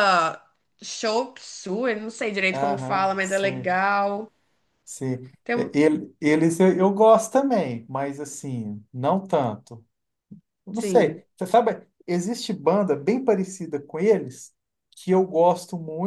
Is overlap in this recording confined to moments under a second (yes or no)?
no